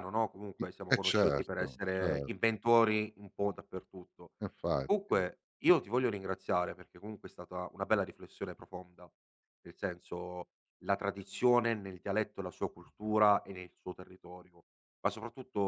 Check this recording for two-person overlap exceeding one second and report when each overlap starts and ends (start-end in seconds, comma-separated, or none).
0.6-2.3